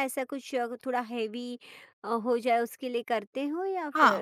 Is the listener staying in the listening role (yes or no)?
no